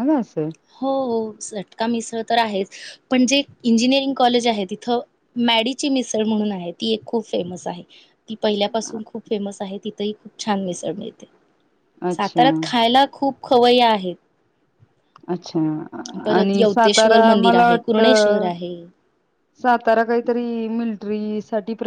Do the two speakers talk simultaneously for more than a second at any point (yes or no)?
yes